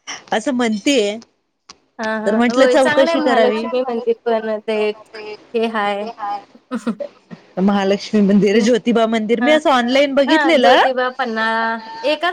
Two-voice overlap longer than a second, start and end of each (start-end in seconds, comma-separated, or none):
2.2-3.6